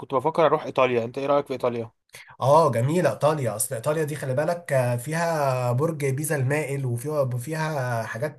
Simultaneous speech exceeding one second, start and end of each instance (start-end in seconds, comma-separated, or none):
none